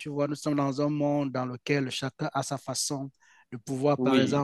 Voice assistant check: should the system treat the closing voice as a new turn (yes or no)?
no